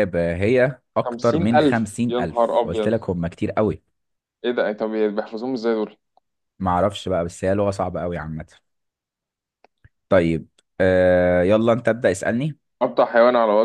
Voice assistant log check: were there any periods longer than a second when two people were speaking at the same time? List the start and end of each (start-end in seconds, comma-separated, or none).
1.1-2.9